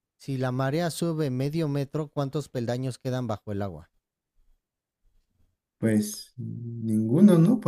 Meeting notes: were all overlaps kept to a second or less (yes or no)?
yes